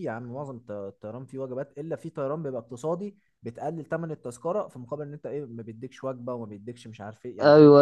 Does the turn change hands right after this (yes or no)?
yes